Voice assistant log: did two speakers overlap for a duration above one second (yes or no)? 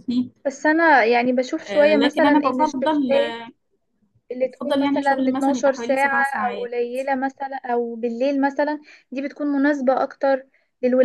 yes